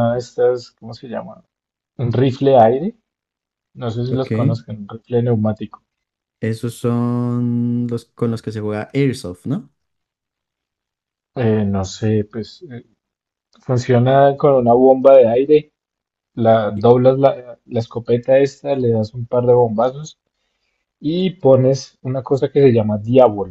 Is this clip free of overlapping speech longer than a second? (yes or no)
yes